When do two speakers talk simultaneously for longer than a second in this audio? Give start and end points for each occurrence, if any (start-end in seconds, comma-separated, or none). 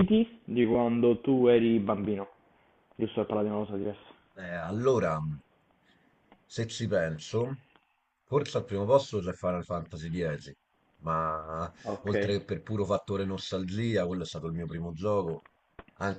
none